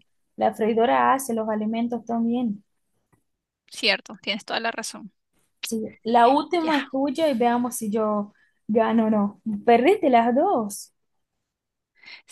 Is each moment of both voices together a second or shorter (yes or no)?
yes